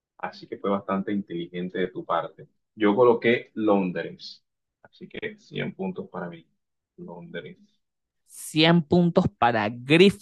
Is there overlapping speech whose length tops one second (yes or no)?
no